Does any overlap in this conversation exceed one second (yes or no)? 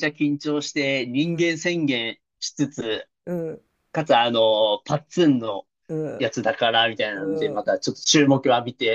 no